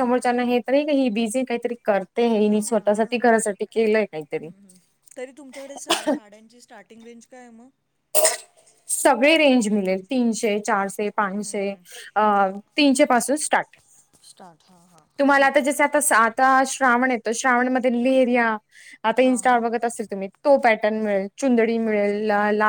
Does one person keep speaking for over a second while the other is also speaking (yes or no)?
no